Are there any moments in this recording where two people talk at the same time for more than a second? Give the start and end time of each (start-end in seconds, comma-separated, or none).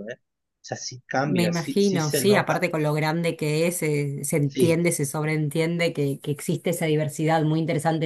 1.3-2.7